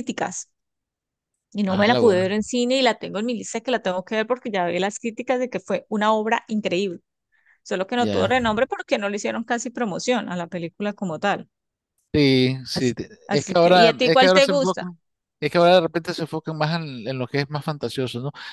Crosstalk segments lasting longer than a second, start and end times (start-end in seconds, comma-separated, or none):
12.8-14.8